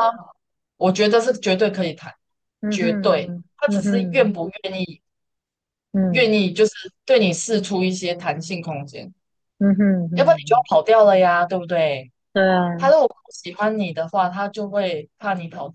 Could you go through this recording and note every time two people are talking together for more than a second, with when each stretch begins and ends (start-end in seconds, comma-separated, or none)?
2.7-4.3